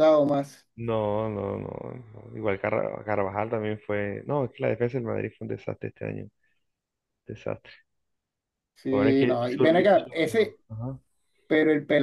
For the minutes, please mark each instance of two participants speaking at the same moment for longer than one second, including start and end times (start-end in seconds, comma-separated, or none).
8.9-10.6